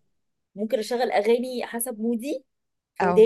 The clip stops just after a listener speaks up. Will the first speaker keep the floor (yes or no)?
no